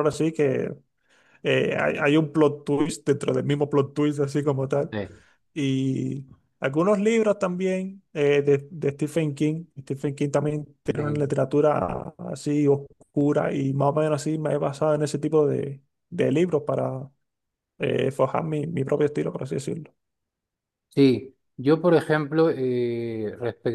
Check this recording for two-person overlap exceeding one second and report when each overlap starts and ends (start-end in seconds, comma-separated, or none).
none